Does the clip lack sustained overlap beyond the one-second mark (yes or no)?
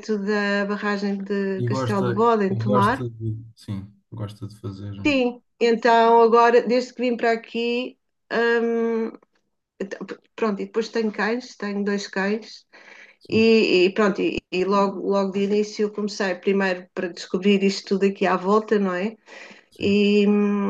no